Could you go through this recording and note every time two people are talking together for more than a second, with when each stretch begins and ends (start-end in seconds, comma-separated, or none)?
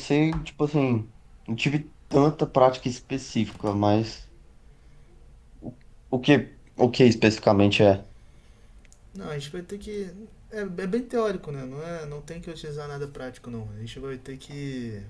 none